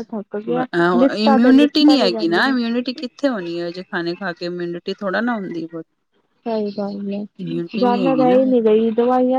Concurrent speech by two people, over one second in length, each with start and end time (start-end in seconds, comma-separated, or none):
1.2-2.5